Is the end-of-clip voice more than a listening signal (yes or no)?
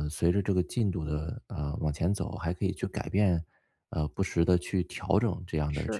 no